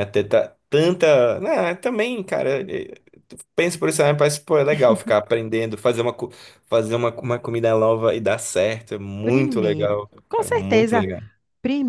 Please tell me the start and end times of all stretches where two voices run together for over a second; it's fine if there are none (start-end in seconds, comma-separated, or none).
9.2-11.1